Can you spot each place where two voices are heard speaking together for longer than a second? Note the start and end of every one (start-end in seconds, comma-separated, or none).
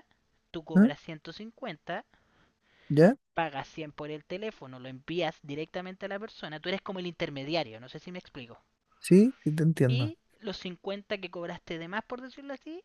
none